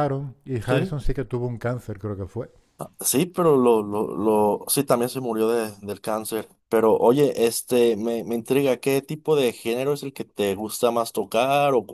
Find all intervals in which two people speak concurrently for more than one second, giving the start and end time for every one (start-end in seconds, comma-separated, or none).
none